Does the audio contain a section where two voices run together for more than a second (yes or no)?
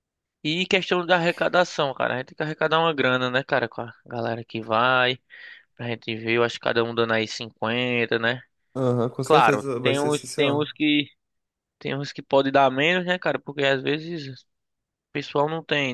yes